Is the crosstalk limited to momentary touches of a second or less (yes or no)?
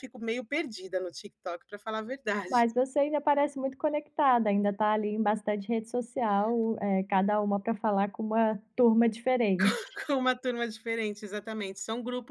yes